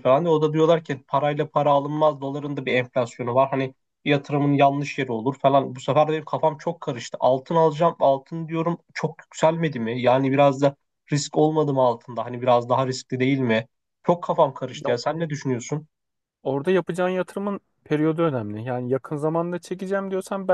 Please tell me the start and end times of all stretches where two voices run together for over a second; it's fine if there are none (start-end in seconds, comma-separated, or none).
none